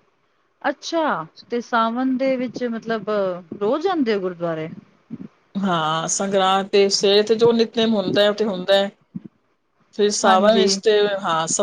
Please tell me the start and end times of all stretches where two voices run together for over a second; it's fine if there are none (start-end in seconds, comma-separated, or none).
none